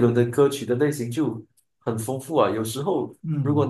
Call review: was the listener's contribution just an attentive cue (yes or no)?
yes